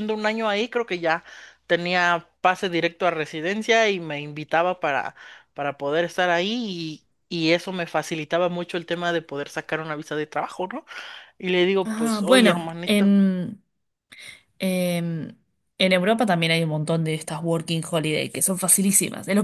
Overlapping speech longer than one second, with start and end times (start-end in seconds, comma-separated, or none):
11.8-13.1